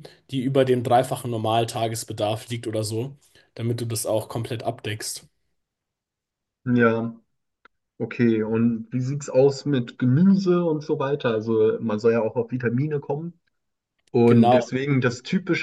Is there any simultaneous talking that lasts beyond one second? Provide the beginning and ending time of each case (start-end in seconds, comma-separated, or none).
none